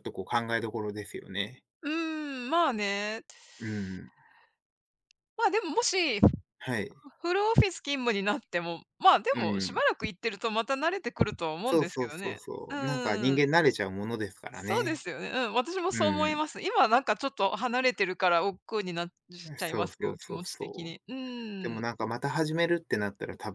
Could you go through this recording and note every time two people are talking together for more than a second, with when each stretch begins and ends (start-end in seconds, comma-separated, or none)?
11.7-13.5, 19.6-21.0